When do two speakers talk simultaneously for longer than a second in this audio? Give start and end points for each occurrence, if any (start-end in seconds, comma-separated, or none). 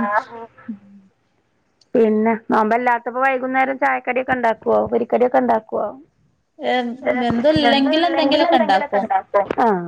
7.7-9.0